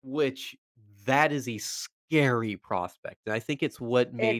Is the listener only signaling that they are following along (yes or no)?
yes